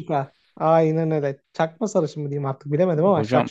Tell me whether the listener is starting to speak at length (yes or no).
yes